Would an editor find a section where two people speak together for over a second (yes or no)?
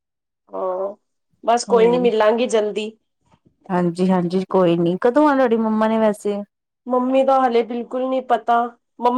no